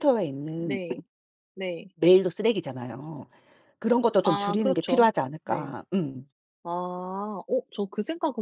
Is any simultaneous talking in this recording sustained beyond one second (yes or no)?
yes